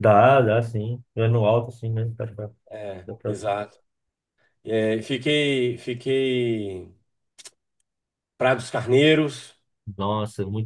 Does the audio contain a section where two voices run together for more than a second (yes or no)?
no